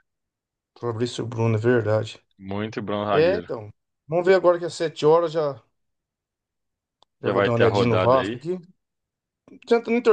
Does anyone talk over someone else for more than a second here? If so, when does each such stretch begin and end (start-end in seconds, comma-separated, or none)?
7.2-8.4